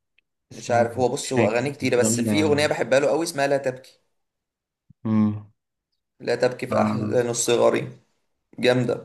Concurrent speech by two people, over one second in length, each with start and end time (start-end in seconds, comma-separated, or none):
0.5-2.8